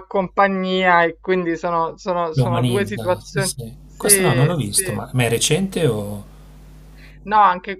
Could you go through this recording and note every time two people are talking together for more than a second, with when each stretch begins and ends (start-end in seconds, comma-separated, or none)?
2.3-5.0